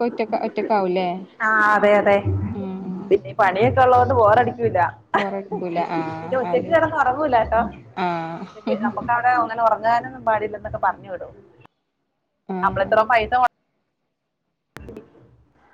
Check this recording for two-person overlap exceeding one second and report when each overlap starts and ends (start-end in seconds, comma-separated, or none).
none